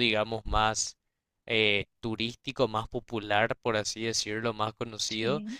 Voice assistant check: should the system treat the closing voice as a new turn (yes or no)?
no